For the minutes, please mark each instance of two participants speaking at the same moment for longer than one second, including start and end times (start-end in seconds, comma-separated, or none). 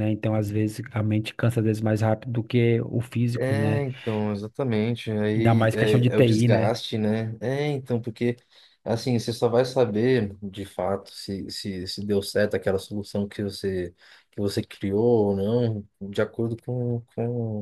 5.4-6.8